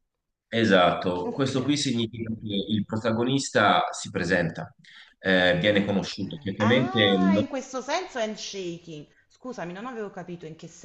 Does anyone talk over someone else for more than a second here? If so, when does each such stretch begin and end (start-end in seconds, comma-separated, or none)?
5.5-7.4